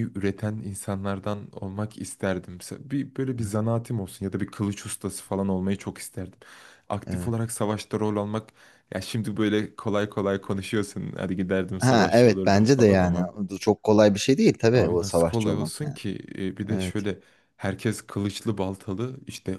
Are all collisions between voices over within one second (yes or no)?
no